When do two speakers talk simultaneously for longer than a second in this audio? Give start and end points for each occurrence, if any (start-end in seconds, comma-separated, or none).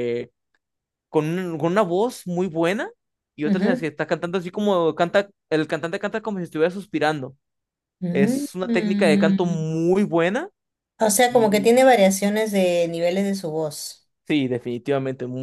8.1-9.7